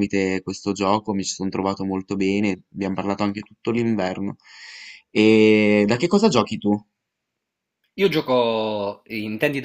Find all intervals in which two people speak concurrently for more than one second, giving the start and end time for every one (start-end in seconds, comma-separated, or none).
none